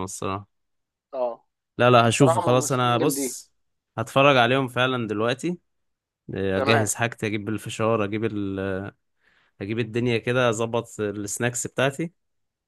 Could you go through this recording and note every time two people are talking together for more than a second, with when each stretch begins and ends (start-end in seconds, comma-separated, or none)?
2.0-3.4